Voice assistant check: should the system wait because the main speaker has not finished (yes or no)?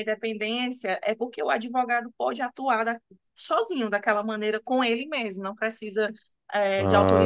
yes